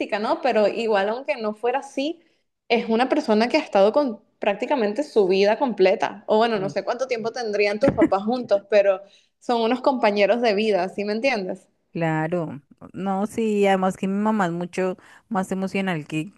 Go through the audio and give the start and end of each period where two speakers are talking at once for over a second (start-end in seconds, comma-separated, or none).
none